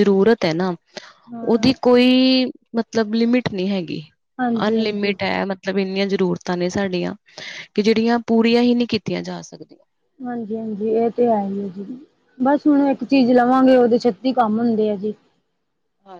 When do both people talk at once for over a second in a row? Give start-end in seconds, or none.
none